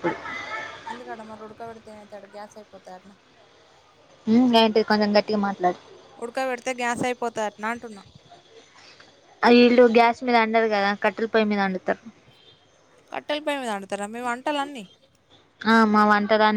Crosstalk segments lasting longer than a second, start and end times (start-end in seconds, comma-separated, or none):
none